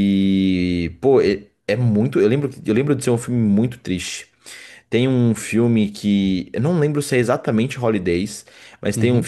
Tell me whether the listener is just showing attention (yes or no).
yes